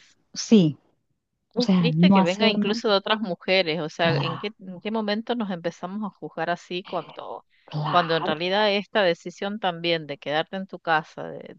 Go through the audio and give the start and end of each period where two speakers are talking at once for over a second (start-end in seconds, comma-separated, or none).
1.6-2.8